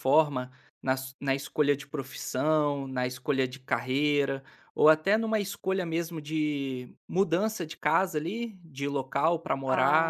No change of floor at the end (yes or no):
no